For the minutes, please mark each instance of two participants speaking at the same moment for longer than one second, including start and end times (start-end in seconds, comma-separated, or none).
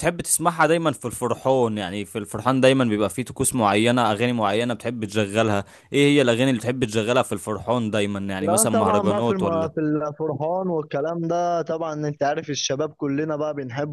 8.4-9.8